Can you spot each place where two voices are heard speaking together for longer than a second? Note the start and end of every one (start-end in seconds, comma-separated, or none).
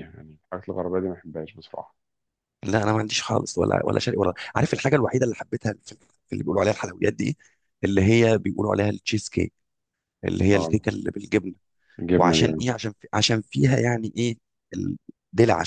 none